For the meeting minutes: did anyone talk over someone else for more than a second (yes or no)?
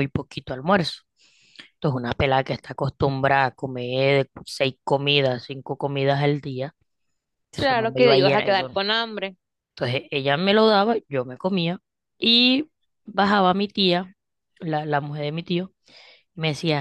yes